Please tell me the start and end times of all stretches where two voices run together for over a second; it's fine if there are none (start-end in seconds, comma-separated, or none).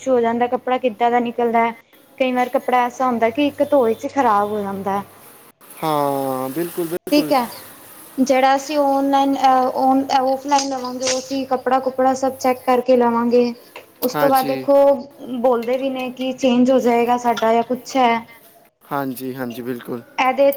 none